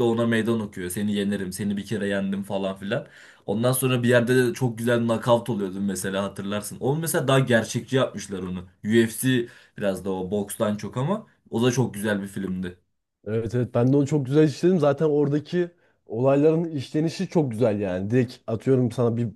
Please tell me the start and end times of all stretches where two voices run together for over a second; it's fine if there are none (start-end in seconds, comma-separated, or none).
none